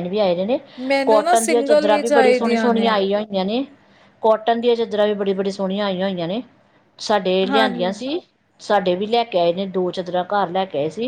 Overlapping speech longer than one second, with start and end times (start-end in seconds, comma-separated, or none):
1.1-2.9